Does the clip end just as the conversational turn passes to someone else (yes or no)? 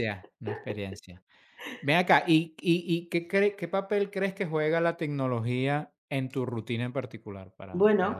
yes